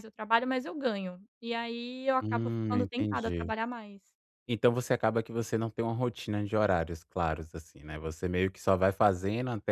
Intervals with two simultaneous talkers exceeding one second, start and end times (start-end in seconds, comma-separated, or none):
2.2-3.5